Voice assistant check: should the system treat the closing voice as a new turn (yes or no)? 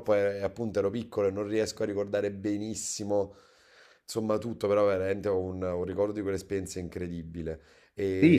yes